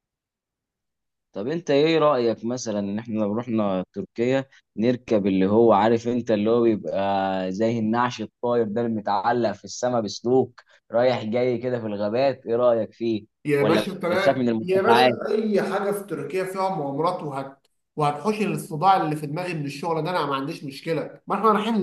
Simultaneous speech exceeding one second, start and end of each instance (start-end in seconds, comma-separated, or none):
13.4-15.2